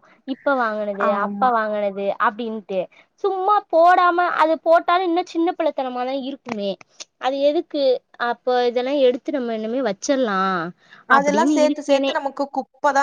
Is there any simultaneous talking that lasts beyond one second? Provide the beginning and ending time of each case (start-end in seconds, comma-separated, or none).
none